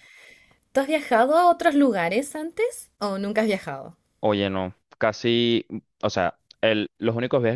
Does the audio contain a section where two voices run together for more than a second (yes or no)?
no